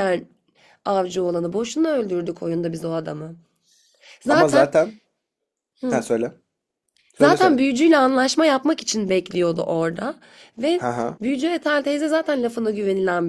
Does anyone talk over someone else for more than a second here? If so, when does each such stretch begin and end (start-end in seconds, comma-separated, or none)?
none